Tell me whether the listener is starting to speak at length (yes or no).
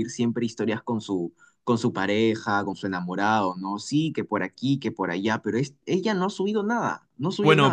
yes